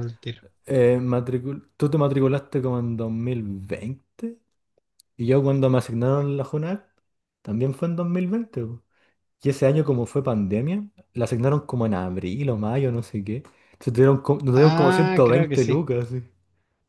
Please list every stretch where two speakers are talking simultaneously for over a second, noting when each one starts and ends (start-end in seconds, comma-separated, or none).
14.6-15.9